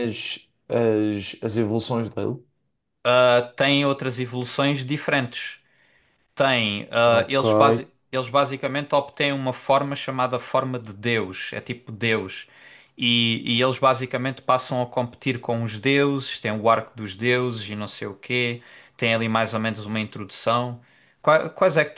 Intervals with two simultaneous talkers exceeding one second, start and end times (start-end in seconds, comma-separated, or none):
none